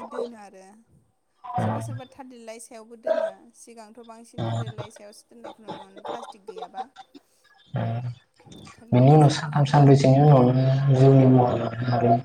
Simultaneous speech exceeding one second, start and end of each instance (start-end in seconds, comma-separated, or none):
8.9-10.4